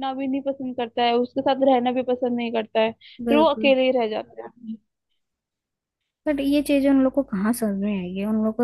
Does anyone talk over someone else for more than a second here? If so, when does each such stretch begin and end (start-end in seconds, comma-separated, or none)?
none